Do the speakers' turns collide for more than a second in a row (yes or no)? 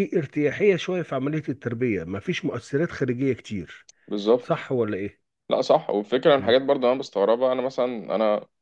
no